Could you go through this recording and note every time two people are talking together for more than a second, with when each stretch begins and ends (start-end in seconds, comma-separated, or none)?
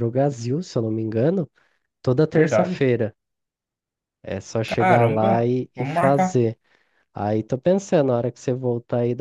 4.7-6.4